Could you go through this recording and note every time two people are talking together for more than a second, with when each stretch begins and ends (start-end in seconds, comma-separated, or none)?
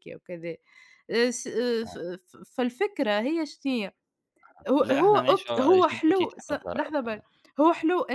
4.8-7.2